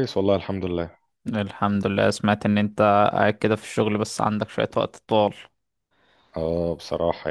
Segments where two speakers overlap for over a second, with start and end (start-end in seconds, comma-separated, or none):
none